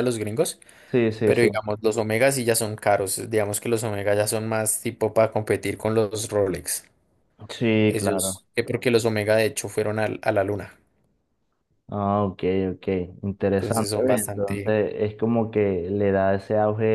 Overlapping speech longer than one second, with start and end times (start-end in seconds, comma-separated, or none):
13.6-14.8